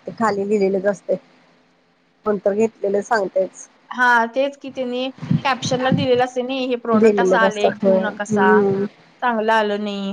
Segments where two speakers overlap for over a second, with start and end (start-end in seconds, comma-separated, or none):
7.0-8.5